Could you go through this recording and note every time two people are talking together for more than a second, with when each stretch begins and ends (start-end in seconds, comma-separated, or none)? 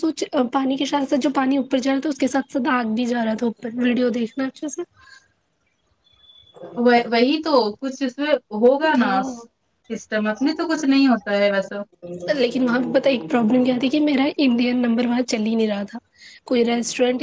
none